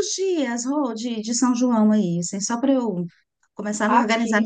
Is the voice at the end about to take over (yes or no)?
no